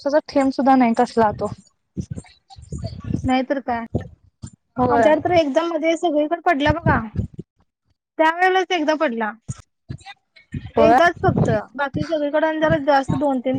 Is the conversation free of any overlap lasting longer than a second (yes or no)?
yes